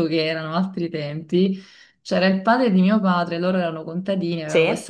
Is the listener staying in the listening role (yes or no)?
yes